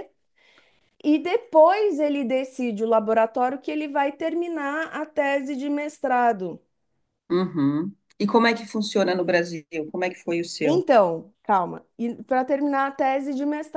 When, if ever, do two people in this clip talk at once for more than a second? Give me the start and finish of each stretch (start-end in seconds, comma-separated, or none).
none